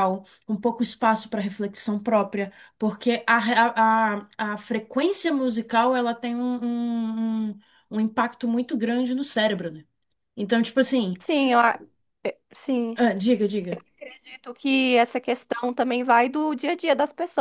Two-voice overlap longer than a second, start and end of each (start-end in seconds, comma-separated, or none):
none